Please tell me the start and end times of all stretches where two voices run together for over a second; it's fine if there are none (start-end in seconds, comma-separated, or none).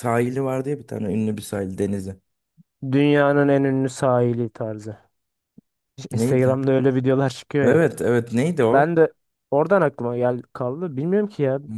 none